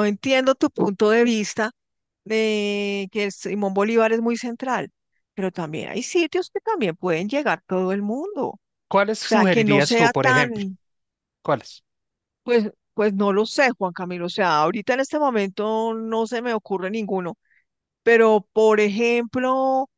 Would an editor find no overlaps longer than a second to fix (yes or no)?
no